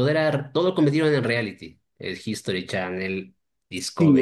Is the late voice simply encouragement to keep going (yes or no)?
no